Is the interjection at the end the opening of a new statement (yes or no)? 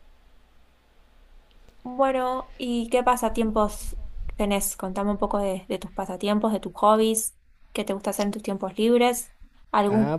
yes